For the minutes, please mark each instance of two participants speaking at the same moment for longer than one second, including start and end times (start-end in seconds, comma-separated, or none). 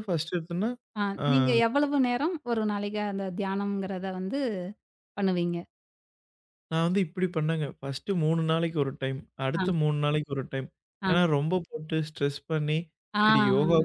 none